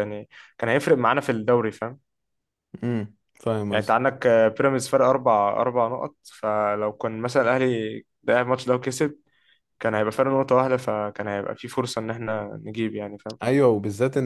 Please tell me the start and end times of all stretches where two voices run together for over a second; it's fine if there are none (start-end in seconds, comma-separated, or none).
none